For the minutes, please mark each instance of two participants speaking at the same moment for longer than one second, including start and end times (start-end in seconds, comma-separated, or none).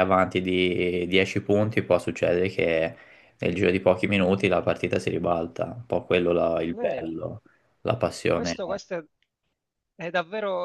none